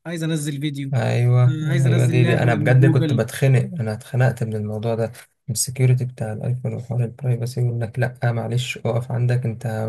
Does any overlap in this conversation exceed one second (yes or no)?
yes